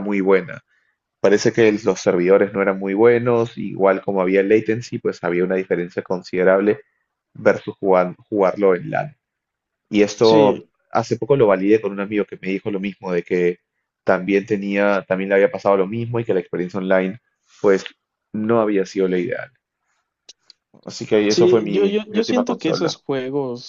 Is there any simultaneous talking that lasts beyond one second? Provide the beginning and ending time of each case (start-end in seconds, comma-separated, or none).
21.3-22.9